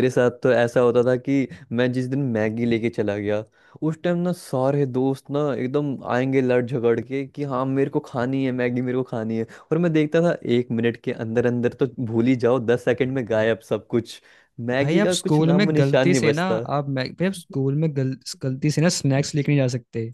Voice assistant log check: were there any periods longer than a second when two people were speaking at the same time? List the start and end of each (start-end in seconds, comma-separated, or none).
14.8-16.6